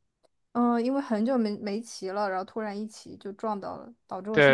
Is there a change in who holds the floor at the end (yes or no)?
yes